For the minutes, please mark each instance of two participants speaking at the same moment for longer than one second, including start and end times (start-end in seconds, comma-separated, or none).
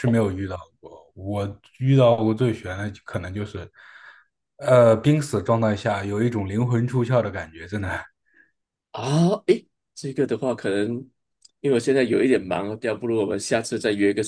none